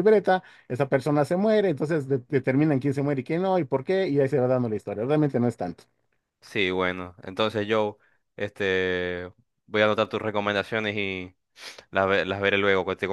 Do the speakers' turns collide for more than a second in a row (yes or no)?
no